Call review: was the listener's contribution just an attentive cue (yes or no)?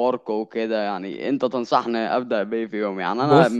yes